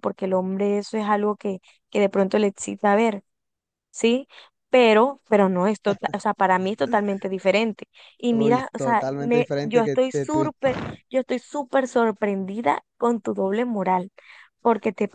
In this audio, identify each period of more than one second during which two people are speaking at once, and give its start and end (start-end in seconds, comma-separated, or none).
8.3-10.5